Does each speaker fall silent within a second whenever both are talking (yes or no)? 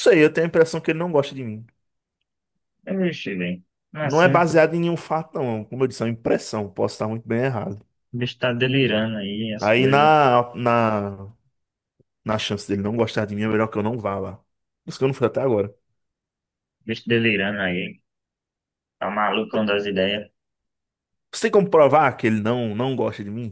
yes